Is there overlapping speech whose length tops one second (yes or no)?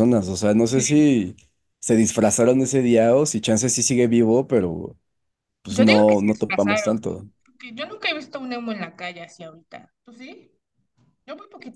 yes